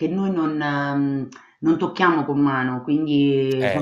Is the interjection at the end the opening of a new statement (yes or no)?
no